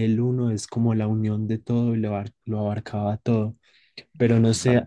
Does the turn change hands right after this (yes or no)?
no